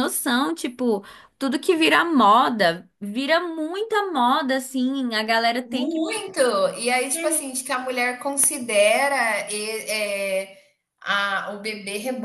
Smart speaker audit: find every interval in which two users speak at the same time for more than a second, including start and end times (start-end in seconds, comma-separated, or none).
none